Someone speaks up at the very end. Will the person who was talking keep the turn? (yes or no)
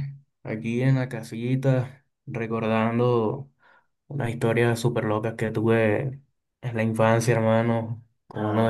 yes